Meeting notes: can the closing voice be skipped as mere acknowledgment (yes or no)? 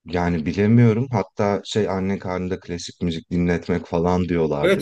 no